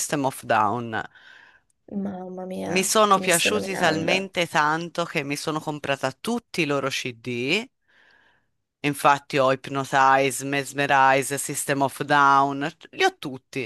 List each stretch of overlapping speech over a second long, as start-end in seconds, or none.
2.7-4.3